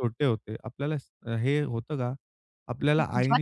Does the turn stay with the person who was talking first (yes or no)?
yes